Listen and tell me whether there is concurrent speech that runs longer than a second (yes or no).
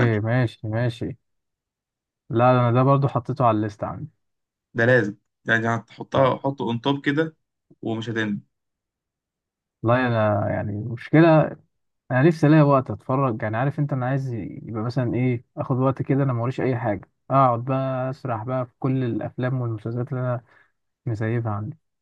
no